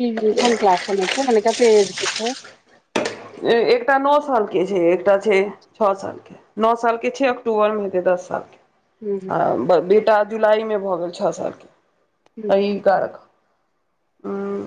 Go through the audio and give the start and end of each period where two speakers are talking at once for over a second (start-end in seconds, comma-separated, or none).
none